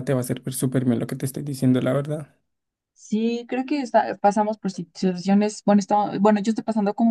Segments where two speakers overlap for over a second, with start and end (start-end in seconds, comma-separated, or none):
none